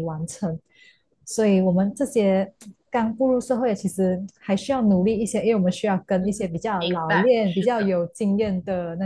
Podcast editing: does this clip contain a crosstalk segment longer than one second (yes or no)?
yes